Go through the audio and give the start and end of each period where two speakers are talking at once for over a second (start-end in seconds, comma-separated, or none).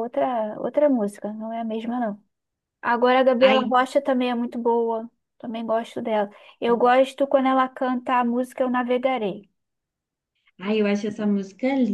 none